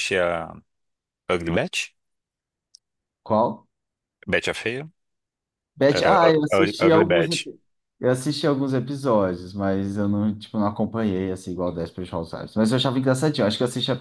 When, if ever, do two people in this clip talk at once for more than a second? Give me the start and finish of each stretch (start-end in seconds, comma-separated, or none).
5.9-7.5